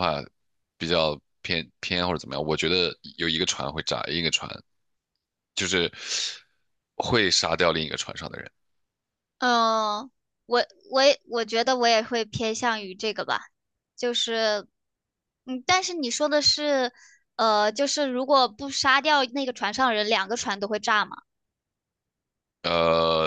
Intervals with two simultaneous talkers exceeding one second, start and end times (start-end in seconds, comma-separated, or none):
none